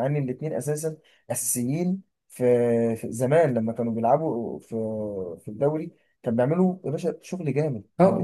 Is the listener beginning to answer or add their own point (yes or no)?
yes